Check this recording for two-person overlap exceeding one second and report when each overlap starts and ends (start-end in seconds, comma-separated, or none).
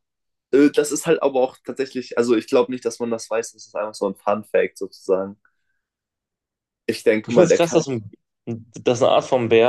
none